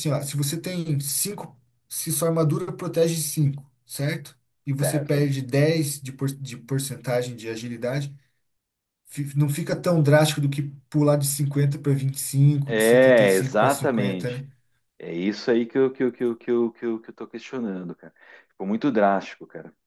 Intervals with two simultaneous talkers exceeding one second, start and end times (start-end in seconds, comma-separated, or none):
12.6-14.4